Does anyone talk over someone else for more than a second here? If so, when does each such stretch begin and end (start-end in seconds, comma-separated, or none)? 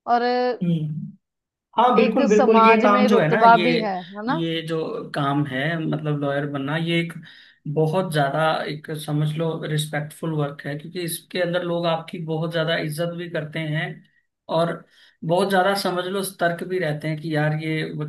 2.0-3.7